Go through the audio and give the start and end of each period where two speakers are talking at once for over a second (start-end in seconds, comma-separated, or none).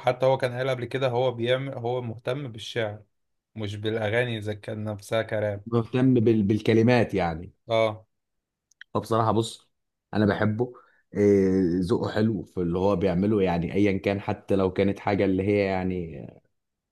none